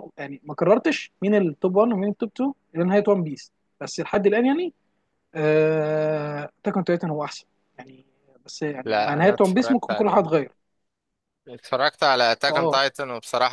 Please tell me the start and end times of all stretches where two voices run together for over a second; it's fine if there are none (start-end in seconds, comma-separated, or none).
8.8-10.3